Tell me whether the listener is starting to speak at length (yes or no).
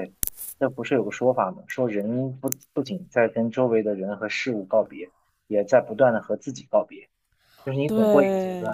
no